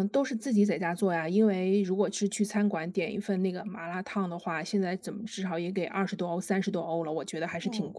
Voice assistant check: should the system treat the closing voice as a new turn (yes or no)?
yes